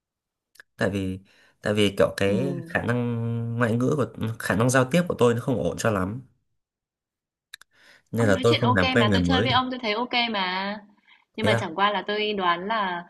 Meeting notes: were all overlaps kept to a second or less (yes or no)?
no